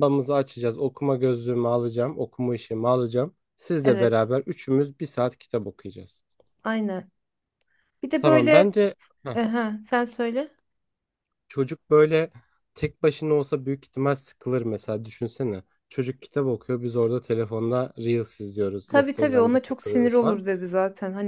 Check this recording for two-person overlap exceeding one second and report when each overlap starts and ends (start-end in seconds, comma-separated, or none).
18.9-20.4